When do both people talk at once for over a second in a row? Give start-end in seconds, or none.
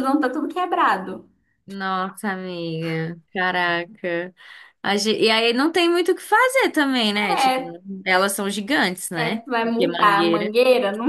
9.1-10.5